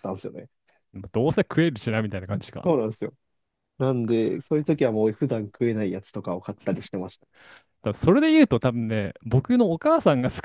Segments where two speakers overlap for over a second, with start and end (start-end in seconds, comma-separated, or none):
none